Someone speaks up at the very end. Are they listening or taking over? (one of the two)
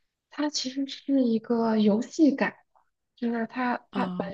listening